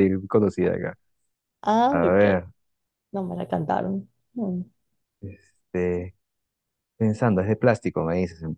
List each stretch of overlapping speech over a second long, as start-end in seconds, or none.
none